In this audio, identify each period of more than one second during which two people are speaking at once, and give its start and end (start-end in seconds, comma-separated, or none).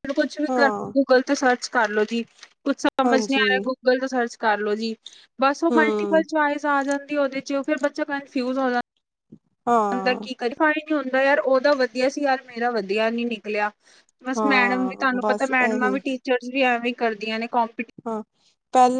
14.4-15.9